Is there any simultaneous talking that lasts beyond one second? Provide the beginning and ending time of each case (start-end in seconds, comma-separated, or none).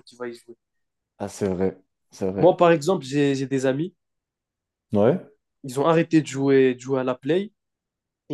none